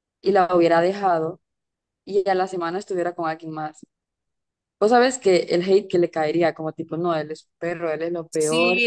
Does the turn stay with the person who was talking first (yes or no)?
no